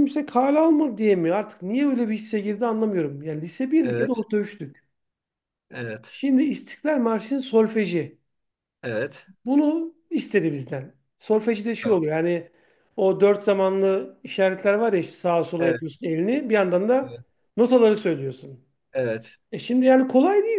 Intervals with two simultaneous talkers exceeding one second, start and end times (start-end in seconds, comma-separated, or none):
none